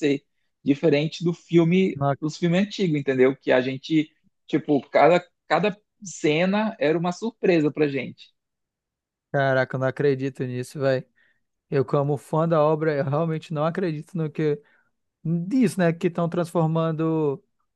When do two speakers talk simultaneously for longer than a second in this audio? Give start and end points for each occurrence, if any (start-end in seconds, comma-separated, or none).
none